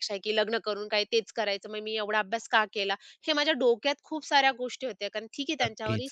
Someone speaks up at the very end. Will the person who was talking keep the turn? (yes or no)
no